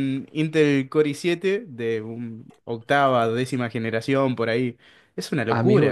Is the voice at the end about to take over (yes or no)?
yes